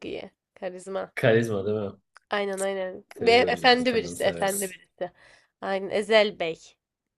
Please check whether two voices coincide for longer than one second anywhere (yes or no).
yes